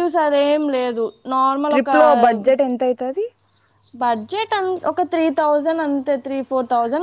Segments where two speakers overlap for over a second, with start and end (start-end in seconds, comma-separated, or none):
none